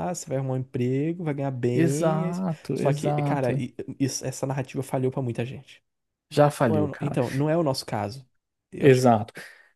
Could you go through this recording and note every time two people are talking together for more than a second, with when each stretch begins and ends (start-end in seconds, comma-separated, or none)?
1.7-3.7